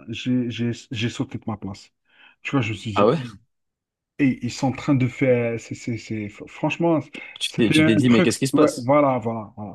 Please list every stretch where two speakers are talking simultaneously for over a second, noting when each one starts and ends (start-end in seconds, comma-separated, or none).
7.5-8.9